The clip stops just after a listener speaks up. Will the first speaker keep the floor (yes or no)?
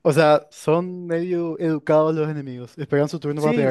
no